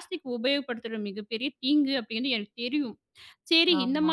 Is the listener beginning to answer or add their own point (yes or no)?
no